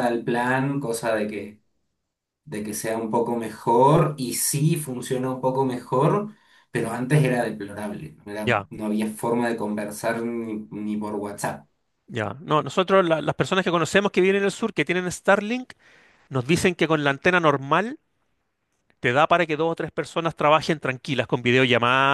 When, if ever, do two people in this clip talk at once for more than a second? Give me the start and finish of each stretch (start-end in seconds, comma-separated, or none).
none